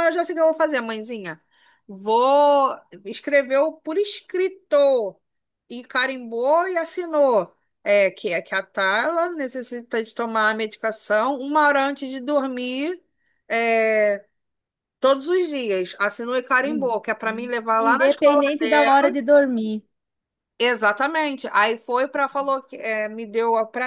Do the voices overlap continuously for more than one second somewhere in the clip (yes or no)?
yes